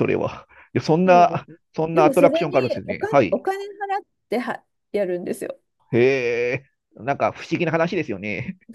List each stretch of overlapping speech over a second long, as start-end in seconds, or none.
1.1-3.4